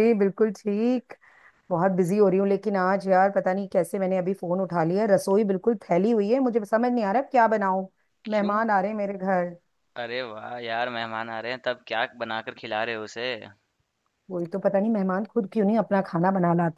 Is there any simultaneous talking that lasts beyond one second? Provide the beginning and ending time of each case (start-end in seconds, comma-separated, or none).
none